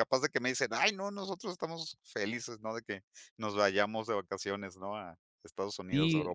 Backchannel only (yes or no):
no